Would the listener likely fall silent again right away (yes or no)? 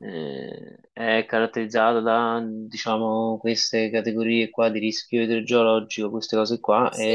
yes